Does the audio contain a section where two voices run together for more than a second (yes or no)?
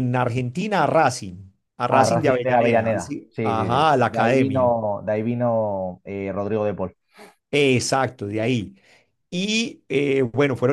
yes